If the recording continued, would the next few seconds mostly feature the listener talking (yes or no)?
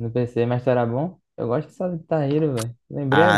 yes